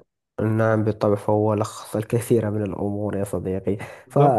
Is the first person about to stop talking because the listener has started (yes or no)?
no